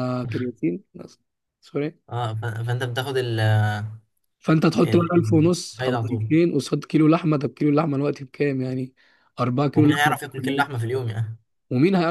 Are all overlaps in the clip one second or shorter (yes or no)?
no